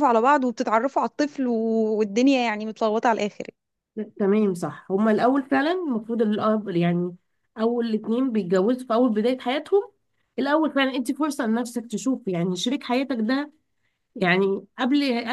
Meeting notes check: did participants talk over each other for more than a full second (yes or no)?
no